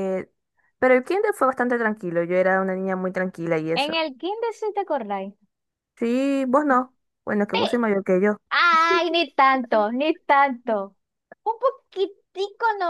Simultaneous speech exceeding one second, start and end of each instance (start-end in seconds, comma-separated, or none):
none